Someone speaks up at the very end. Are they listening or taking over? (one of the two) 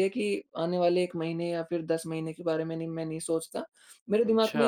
listening